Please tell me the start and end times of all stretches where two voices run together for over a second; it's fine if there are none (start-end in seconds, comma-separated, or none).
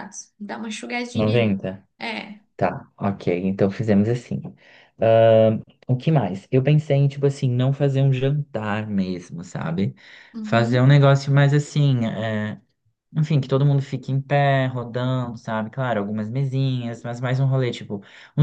none